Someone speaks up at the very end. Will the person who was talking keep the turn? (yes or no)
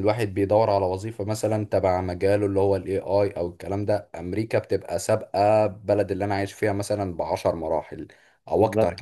no